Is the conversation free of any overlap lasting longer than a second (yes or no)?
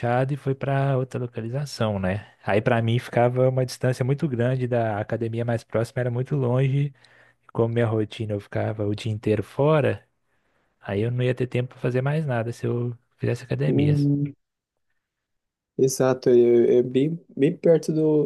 yes